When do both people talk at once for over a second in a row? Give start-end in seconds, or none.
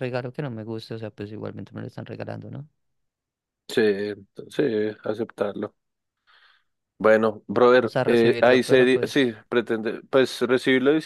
7.8-9.4